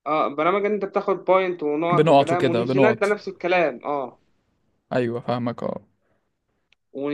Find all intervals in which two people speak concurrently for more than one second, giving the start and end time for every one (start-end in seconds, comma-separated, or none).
1.9-3.1